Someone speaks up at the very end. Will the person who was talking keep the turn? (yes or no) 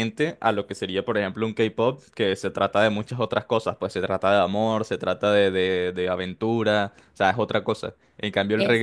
yes